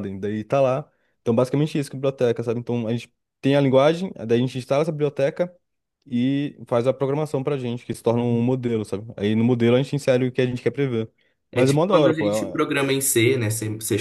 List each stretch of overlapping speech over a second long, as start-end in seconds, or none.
11.5-12.8